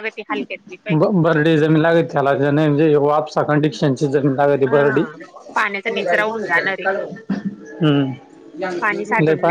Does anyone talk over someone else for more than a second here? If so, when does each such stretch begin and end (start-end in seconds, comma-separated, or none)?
none